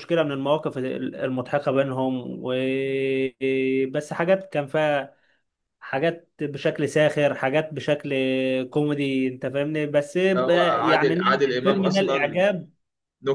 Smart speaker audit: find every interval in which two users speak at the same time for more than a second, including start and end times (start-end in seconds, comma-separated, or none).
10.4-12.4